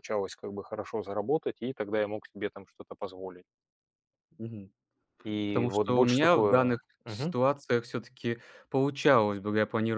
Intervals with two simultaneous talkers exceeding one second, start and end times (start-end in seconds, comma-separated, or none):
5.5-7.4